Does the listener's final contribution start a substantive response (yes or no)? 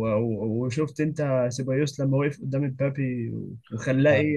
yes